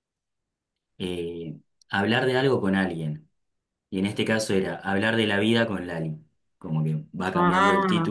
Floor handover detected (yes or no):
no